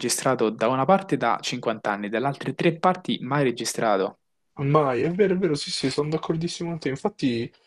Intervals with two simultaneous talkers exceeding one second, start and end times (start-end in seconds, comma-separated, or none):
none